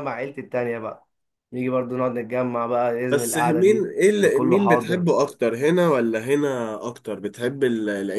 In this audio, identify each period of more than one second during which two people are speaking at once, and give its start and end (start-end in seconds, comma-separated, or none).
3.1-5.1